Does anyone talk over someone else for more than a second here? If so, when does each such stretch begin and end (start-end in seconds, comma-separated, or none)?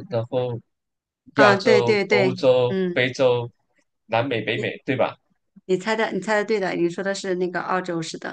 1.4-3.0